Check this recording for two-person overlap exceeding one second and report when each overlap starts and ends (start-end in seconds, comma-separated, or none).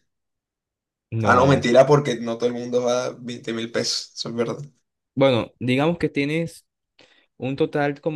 none